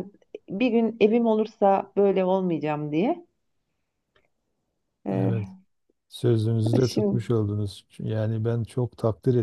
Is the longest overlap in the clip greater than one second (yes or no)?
no